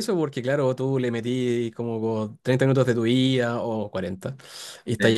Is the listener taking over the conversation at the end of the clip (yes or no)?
no